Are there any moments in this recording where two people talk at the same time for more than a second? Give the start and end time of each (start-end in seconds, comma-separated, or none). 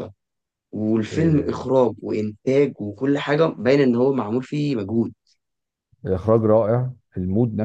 none